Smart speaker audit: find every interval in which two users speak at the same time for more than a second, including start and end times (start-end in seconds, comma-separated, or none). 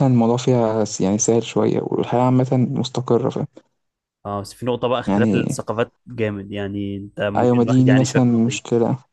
7.4-8.6